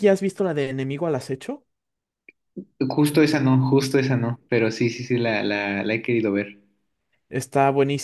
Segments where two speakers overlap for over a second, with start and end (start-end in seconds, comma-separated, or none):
none